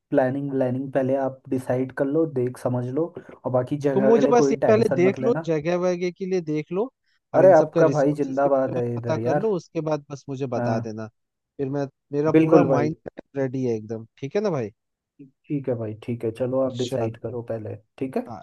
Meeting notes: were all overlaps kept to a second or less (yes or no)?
no